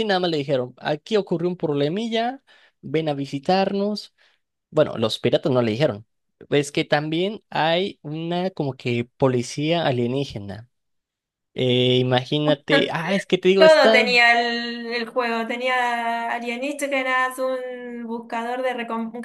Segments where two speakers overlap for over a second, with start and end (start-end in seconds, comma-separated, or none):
none